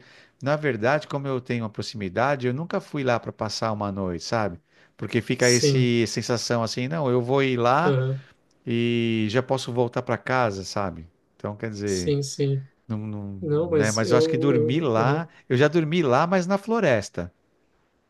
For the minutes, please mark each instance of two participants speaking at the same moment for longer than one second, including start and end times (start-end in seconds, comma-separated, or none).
13.4-15.3